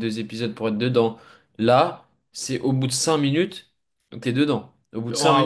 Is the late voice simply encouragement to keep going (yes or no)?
no